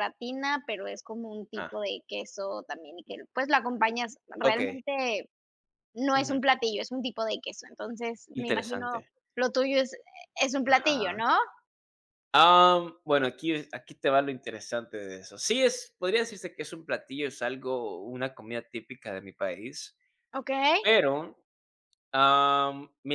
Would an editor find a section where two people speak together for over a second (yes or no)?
no